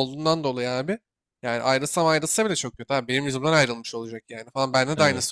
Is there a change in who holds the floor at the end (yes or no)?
no